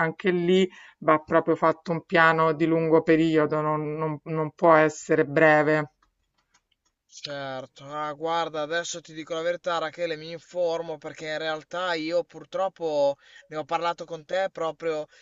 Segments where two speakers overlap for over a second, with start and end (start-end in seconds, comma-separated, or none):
none